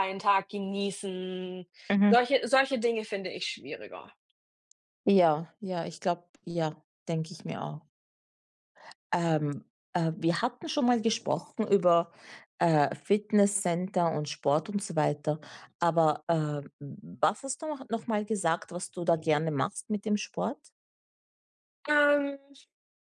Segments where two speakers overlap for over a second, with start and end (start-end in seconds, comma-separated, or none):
none